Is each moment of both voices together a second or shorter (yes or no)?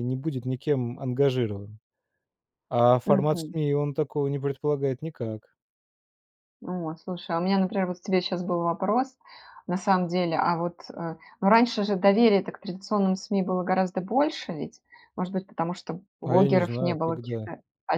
no